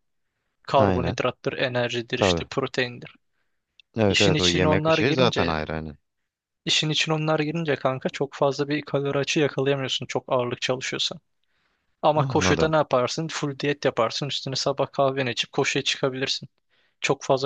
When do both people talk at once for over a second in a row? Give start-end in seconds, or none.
4.1-5.5